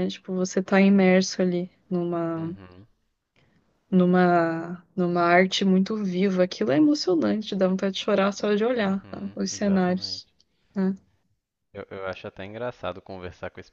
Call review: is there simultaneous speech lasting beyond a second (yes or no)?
yes